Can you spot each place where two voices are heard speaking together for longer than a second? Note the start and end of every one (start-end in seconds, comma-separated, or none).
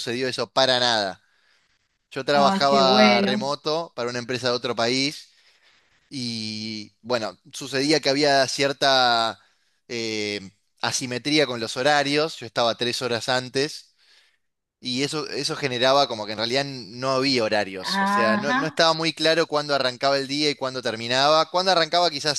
2.3-3.5